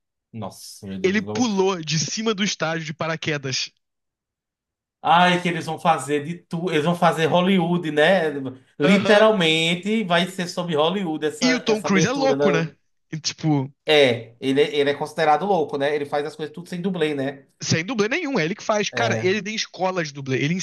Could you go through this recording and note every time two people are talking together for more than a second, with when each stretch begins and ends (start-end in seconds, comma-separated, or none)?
11.5-12.7